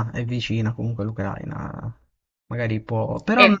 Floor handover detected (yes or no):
no